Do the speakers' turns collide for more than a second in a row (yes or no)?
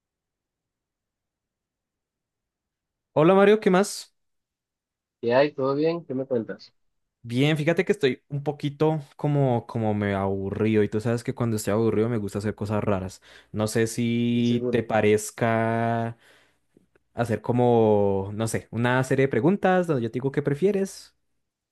no